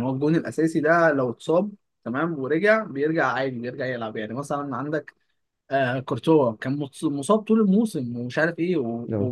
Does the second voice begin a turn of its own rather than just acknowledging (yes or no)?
no